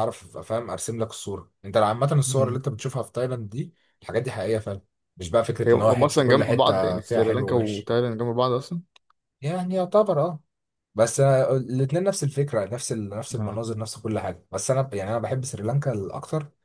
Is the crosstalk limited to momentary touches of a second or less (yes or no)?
no